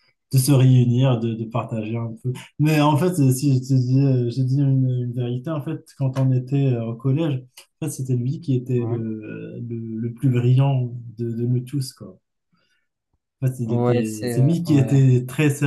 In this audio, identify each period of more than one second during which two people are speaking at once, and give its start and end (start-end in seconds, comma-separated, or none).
13.7-15.0